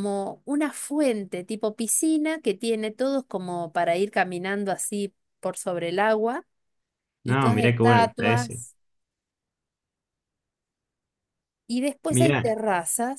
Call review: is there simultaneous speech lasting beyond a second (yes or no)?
yes